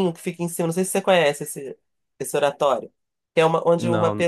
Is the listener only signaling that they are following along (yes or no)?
yes